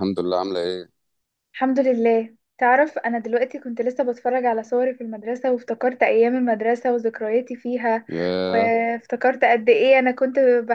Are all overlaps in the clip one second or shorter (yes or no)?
yes